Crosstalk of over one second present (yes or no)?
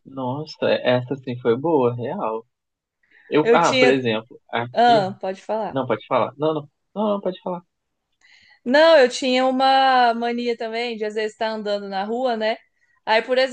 no